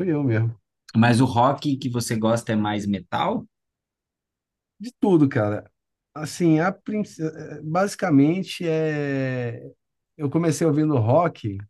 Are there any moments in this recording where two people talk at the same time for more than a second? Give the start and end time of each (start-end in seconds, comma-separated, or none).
none